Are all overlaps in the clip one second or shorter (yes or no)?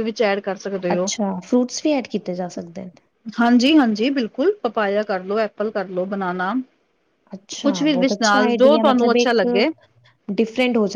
no